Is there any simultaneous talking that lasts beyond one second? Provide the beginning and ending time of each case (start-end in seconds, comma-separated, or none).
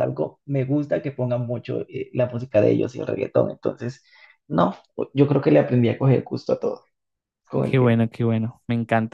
none